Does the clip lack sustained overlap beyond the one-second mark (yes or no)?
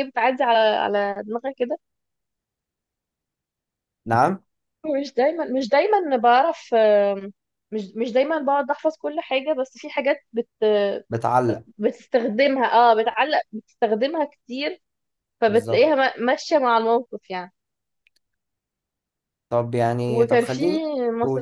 yes